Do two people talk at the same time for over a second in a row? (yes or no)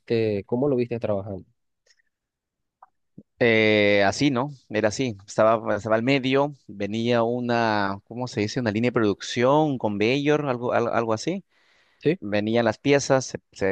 no